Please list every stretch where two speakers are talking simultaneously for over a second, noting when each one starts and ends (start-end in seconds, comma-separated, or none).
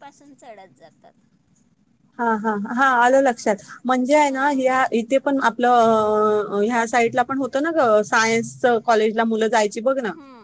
none